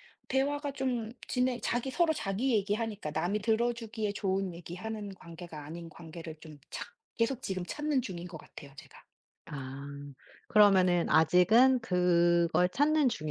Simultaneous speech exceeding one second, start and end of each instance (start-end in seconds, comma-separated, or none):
none